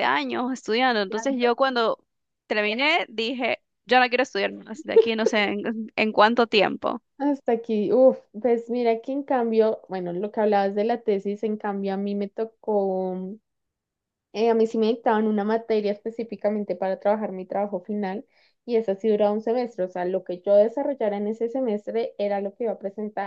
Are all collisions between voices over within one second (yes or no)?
yes